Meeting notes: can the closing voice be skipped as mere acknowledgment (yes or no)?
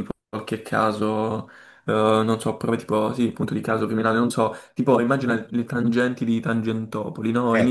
yes